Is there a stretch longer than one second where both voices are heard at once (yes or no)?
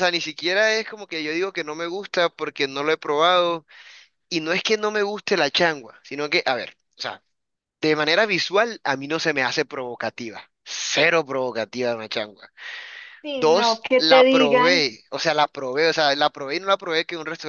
yes